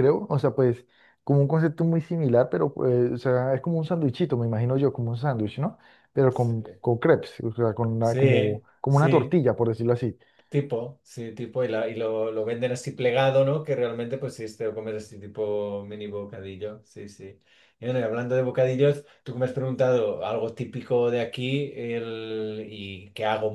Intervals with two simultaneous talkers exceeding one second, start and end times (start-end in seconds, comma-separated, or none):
8.0-9.4